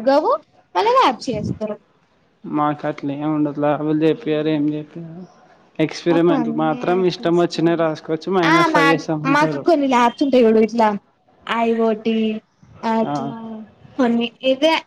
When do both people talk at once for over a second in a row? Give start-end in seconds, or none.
6.1-7.8